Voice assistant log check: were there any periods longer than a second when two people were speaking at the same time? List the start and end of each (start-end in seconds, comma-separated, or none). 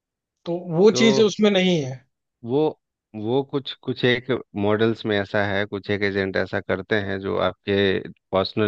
none